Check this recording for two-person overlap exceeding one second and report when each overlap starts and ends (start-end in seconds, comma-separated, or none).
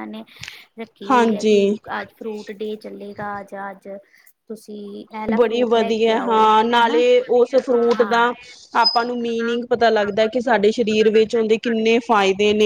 none